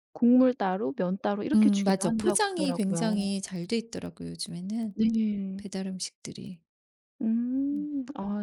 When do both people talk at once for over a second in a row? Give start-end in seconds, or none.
1.5-3.3